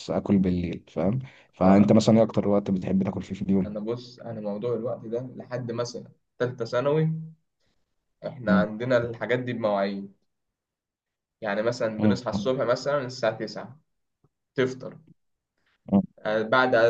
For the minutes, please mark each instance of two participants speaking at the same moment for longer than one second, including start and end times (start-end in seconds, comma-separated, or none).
none